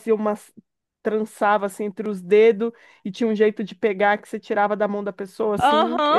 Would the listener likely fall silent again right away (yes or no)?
no